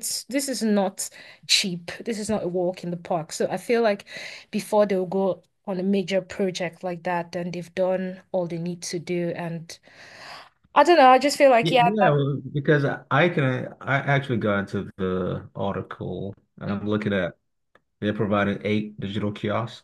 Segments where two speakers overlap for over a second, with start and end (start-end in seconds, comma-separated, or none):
none